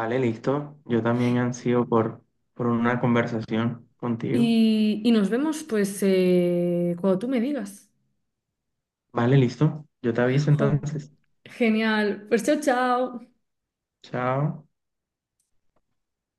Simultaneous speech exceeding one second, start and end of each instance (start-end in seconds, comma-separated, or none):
none